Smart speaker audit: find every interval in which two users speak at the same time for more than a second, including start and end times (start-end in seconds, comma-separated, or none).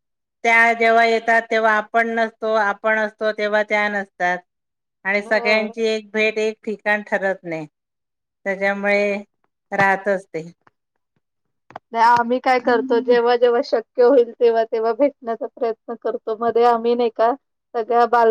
none